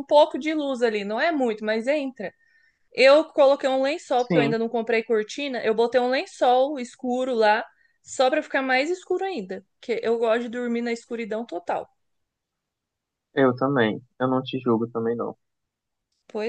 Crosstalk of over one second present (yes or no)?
no